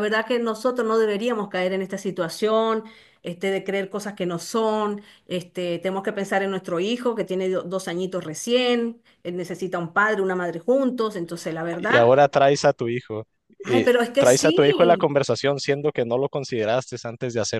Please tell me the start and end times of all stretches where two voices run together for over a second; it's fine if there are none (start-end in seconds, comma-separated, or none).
13.7-15.2